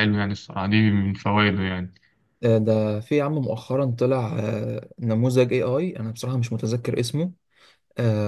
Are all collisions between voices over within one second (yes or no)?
yes